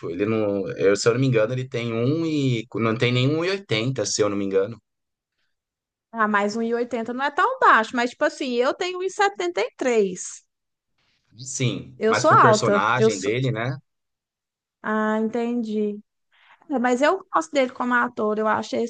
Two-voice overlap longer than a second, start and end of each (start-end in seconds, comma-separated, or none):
12.0-13.3